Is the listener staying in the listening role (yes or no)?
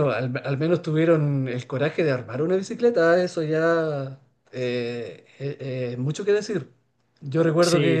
yes